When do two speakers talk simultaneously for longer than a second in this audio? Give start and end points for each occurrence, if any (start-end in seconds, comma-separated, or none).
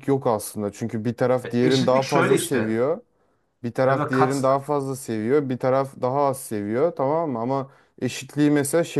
1.4-2.8